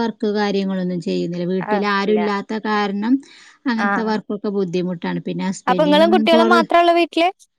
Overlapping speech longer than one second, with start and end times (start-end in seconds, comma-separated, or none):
none